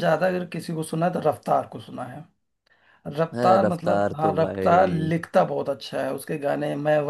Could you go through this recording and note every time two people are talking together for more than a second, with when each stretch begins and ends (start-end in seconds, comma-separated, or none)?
3.3-5.1